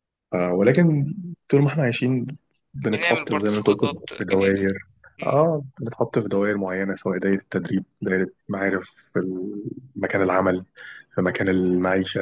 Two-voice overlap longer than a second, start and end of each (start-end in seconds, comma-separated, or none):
2.8-4.6